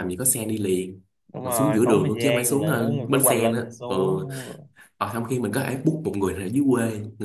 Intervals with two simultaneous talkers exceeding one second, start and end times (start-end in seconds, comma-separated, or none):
1.4-4.3